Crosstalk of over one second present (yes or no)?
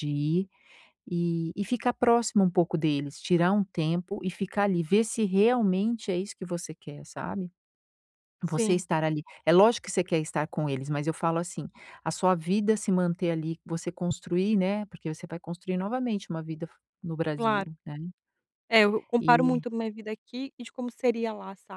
no